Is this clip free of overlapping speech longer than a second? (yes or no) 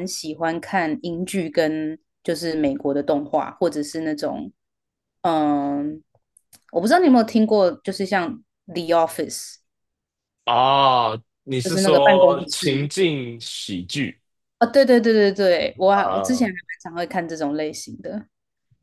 no